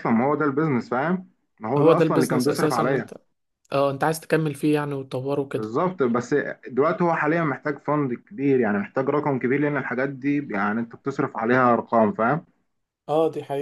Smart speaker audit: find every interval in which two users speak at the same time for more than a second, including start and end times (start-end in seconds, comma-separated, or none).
1.8-3.1